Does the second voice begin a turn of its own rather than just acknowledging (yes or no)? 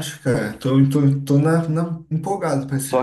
yes